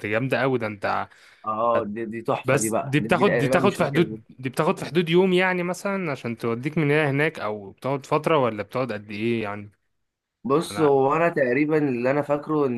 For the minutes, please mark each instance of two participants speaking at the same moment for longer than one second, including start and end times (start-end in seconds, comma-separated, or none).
2.4-4.2